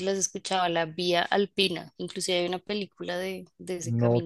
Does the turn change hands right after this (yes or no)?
yes